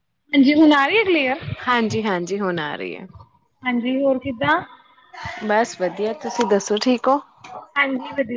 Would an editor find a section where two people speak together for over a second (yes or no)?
no